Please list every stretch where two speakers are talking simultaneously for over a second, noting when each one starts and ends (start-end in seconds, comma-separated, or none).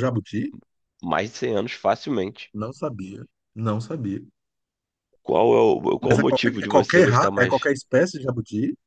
6.0-7.7